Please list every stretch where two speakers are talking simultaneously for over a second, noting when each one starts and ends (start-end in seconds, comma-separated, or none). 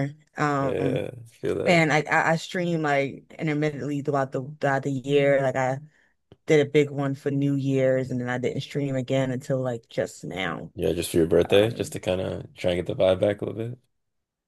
none